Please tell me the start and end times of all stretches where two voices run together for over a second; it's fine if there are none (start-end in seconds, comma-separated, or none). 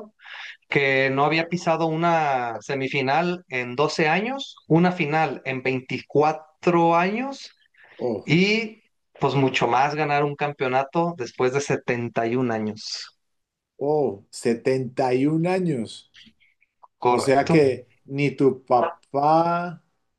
none